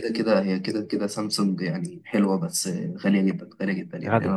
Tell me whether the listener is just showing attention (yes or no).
no